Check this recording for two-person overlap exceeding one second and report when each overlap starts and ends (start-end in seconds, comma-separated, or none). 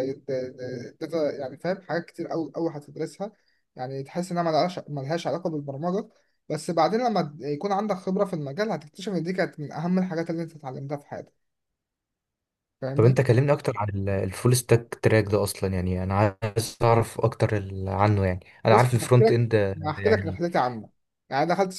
18.7-20.4